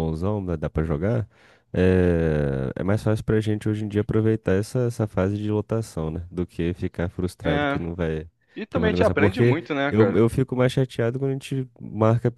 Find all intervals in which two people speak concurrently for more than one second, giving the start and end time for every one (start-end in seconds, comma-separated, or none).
8.7-10.2